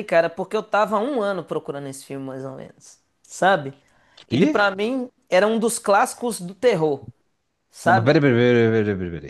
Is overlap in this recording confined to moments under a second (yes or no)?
yes